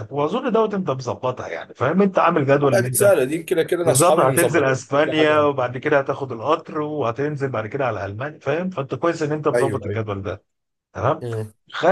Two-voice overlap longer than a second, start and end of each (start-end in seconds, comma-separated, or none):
3.9-5.5